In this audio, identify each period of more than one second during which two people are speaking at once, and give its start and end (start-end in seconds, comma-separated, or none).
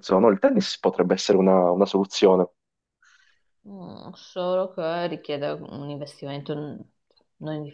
none